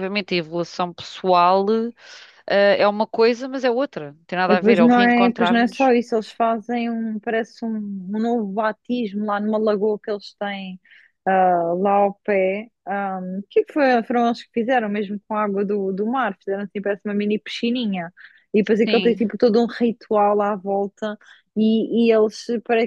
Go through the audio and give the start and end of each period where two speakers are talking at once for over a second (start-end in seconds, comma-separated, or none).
4.5-5.9